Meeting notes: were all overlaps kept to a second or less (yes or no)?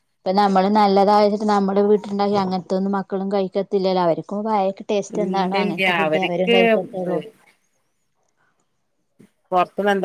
no